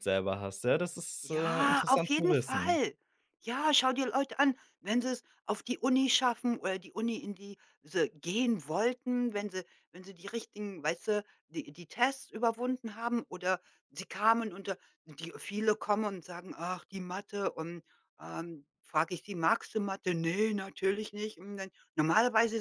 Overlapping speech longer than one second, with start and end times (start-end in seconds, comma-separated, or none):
1.2-2.8